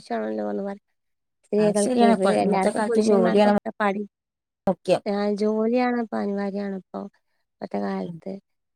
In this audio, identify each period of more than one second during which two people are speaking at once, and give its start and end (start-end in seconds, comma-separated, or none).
1.6-3.5